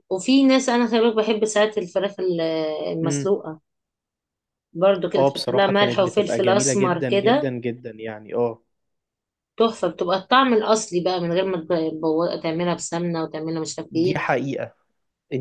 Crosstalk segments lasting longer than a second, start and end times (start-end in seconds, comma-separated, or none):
5.2-7.5